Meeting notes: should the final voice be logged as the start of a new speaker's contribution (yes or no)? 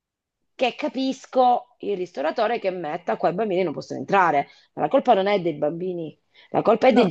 no